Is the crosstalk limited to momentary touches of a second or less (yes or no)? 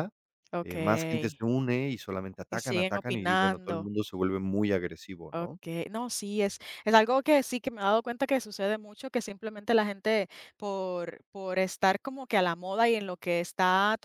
no